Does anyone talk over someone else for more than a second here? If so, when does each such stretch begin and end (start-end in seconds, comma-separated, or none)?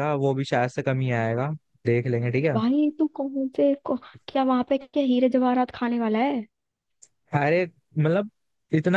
none